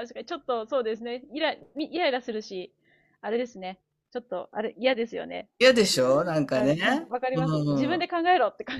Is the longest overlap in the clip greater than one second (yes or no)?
yes